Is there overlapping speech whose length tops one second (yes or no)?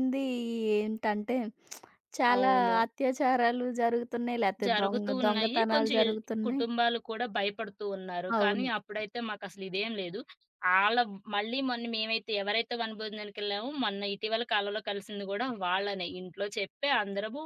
yes